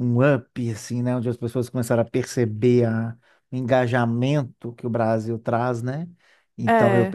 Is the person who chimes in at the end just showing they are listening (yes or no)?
yes